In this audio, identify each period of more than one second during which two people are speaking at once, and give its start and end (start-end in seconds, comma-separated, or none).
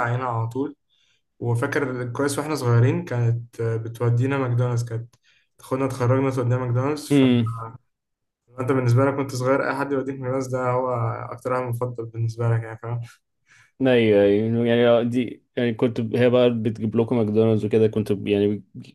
none